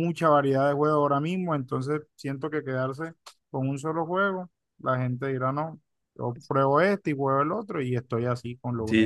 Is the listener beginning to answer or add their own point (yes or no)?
yes